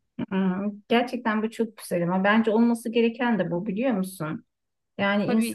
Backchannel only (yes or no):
yes